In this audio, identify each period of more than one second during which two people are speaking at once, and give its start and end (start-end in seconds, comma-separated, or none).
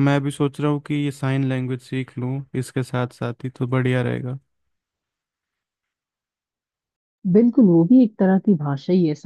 none